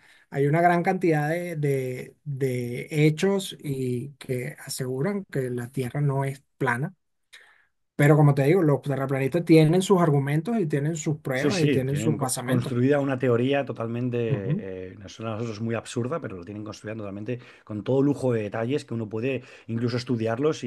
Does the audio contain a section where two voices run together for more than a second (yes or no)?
yes